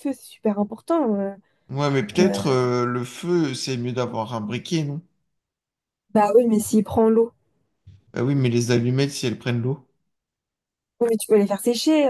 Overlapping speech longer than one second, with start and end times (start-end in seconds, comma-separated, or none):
none